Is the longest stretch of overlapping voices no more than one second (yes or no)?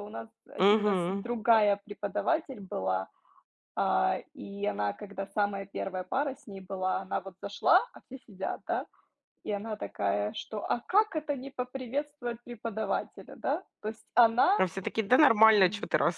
yes